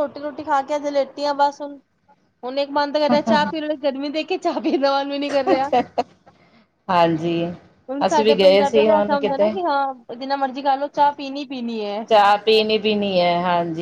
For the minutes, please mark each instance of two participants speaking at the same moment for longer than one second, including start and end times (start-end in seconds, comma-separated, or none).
8.1-9.5